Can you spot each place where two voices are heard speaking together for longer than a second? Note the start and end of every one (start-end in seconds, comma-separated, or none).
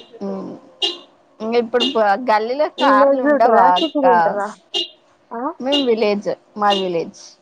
2.8-4.1